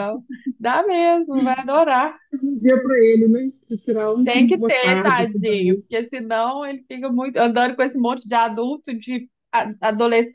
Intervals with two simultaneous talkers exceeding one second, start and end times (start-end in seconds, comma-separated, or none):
4.2-5.8